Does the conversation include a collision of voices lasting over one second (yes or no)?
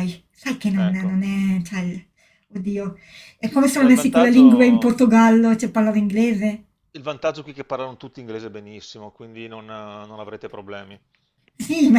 yes